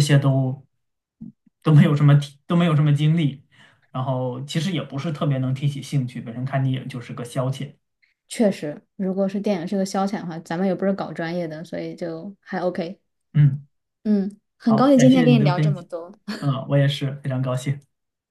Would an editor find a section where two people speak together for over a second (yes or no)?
yes